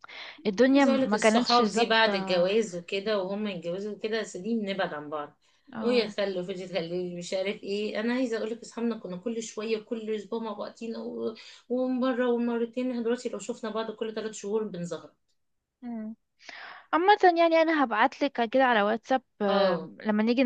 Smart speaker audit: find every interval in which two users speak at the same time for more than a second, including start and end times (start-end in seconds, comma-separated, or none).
0.7-2.1